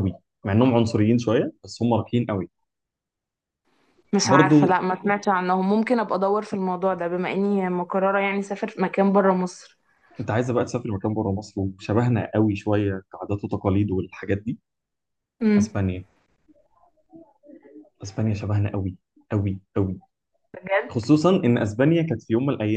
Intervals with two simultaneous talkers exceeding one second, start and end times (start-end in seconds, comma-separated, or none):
none